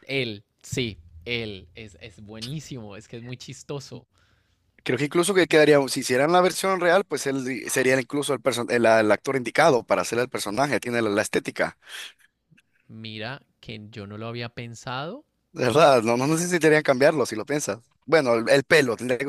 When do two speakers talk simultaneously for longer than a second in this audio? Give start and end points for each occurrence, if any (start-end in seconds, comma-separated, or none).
none